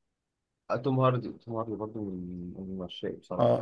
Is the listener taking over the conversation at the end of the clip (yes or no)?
yes